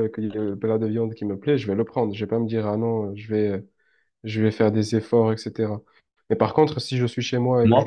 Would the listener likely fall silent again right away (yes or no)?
no